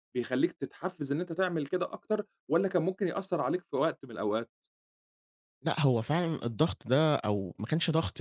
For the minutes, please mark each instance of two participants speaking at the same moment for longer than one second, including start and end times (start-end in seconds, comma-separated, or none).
none